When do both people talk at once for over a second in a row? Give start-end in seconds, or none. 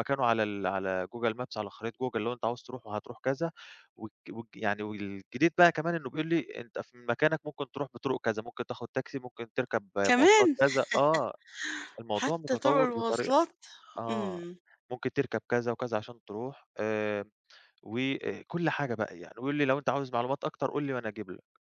12.1-13.3